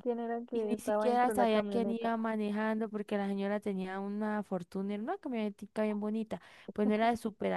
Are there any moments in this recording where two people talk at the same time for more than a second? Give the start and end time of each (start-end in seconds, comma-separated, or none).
0.5-2.1